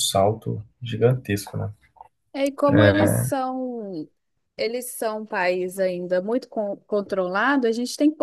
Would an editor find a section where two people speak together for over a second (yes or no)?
no